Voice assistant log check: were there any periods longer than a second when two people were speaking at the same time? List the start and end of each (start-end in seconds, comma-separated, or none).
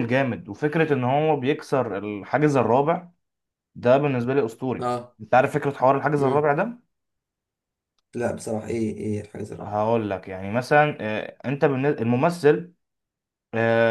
none